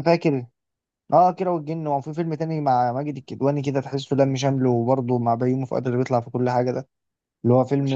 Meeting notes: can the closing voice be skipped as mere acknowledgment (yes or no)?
yes